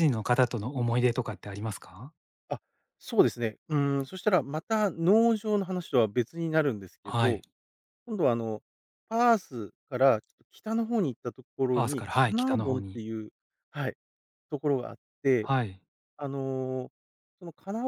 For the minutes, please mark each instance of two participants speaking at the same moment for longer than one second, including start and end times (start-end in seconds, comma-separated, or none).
11.7-13.0